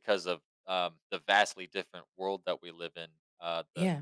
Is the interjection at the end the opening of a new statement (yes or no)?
no